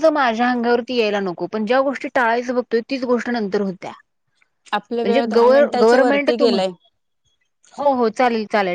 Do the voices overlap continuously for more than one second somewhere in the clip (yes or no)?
yes